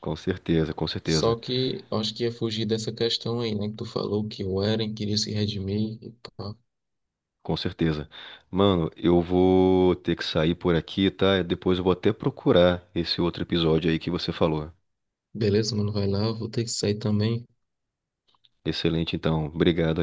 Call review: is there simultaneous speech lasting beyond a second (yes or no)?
no